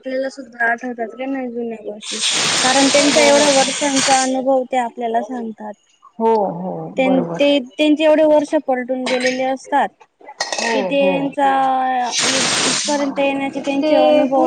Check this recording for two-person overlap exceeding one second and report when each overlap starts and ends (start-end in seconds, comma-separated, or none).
none